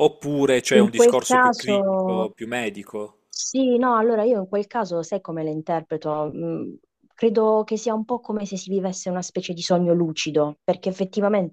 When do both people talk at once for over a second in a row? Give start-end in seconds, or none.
0.7-2.3